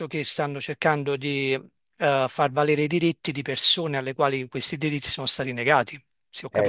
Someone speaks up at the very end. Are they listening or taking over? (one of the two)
taking over